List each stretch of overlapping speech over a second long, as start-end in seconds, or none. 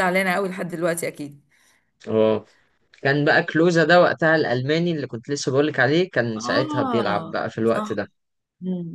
6.3-7.9